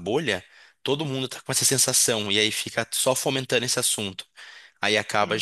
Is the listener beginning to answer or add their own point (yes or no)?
no